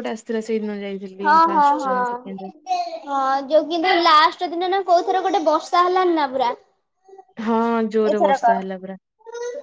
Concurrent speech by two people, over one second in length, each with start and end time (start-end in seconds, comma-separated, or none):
none